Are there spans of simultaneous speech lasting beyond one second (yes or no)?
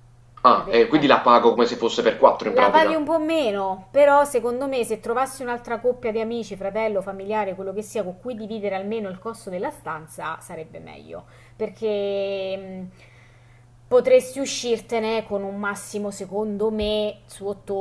no